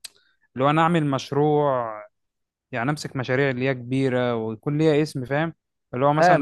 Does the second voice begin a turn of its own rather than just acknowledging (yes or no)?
yes